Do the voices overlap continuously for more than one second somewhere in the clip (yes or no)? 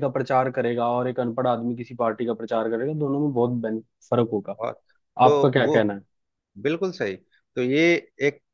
no